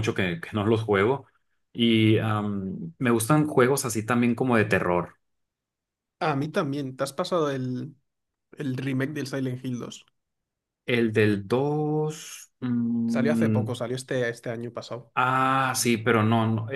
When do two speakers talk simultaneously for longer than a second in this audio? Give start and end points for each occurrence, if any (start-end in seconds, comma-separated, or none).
none